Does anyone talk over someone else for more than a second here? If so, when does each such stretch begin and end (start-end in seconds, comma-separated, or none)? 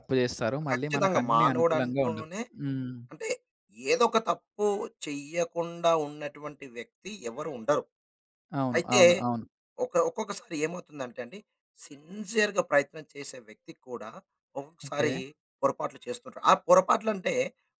0.7-2.4